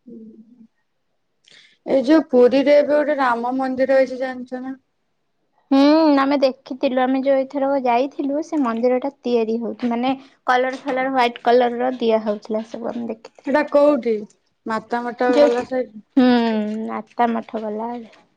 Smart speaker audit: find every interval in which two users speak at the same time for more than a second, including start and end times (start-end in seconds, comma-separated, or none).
none